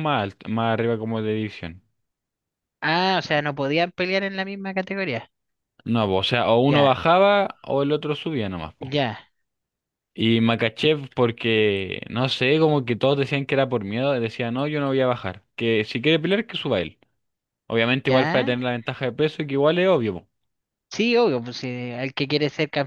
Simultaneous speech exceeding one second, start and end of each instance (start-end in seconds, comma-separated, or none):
none